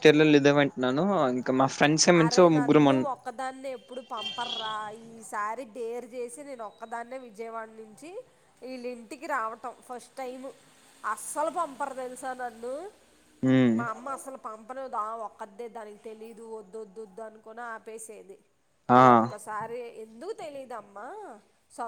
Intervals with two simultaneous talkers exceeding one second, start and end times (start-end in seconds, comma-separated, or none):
none